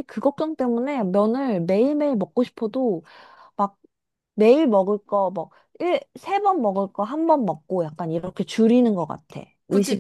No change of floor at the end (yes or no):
no